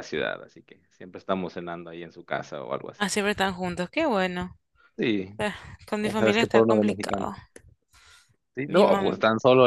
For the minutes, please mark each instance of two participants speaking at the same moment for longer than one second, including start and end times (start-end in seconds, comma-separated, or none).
6.0-7.3